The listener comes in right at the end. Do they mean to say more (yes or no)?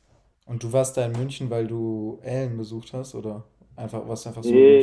yes